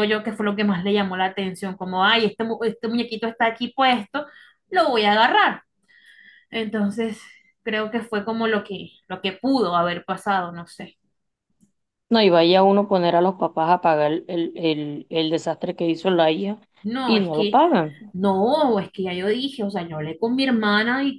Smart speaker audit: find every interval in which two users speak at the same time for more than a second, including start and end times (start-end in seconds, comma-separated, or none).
none